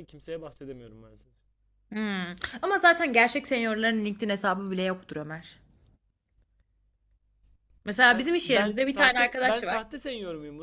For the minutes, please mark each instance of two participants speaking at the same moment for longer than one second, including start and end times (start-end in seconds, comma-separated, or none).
8.1-9.8